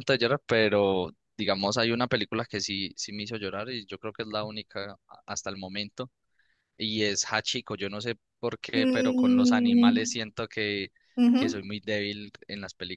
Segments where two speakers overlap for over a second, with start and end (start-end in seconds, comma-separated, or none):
8.7-10.2